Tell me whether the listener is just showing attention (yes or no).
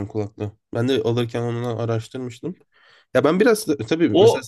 yes